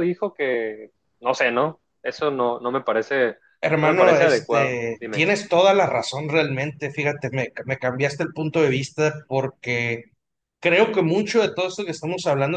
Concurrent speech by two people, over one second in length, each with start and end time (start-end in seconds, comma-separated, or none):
3.8-5.2